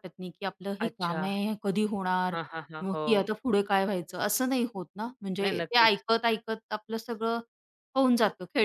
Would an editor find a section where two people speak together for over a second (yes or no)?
no